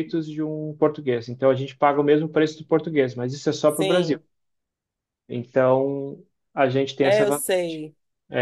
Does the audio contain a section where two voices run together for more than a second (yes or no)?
no